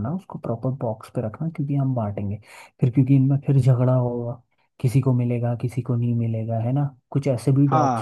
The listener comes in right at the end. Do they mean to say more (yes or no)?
no